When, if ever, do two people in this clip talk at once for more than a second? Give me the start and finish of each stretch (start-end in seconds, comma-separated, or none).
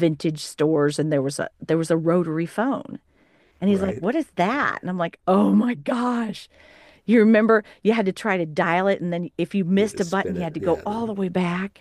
9.7-11.1